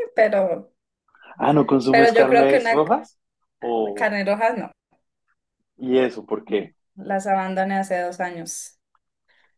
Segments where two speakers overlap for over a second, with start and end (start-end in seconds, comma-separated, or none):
1.9-3.2